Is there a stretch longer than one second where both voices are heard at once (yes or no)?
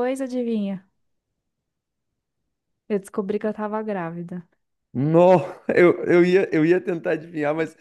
no